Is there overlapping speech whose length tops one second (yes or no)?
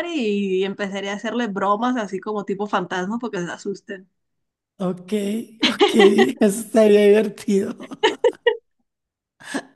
no